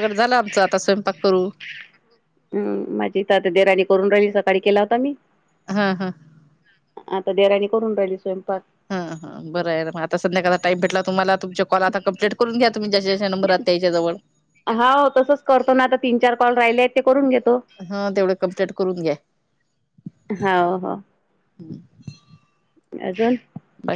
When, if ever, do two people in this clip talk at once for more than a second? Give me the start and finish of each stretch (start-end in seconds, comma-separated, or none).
none